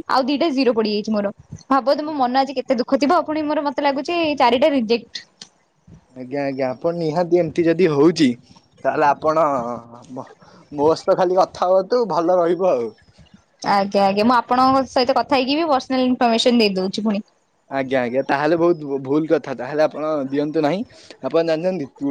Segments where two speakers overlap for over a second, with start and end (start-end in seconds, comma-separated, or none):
none